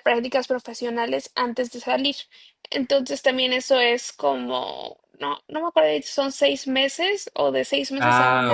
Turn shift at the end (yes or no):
yes